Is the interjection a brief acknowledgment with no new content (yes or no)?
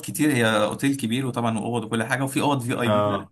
yes